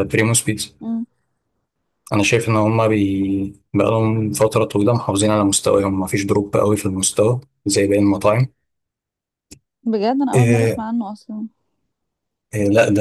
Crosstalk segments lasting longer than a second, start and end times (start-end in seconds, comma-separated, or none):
none